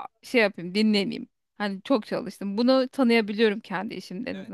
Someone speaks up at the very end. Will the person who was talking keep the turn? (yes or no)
no